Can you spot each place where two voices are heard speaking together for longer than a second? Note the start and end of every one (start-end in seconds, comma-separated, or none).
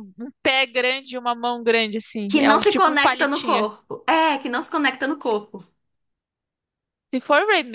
2.3-3.6